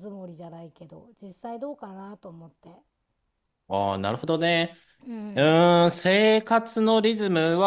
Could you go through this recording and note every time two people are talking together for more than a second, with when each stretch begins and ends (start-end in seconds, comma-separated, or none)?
none